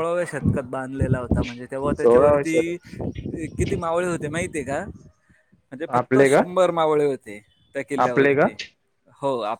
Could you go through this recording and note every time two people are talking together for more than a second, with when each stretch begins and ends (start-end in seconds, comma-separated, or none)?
none